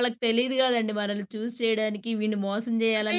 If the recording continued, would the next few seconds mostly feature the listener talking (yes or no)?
no